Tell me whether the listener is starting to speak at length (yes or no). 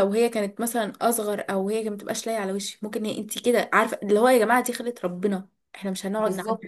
yes